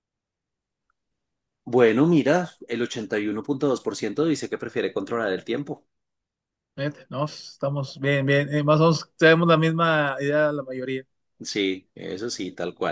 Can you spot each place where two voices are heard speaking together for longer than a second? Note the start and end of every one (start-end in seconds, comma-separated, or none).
none